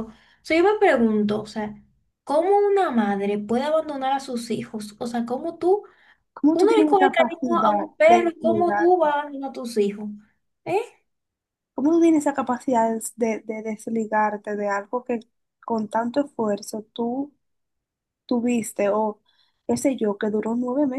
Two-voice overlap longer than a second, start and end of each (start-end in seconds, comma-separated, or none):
6.5-9.1